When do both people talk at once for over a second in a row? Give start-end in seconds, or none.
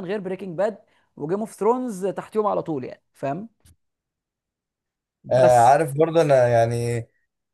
none